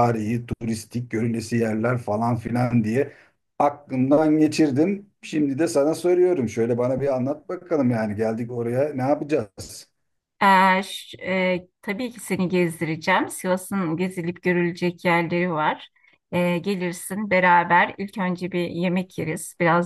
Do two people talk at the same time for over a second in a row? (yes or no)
no